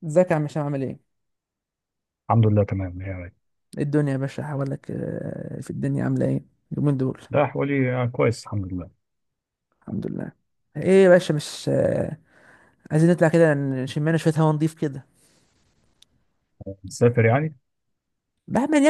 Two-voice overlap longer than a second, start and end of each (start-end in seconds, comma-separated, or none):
none